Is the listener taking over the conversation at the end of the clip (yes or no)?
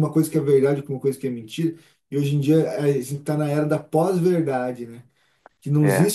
no